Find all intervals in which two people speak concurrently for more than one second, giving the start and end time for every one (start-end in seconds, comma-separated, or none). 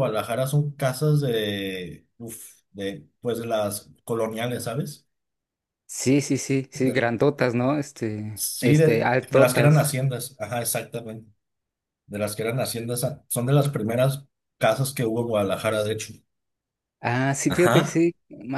8.3-9.9